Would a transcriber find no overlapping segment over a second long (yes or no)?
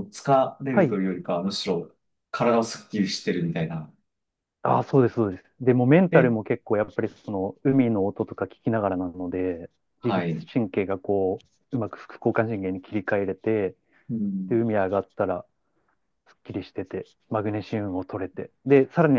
yes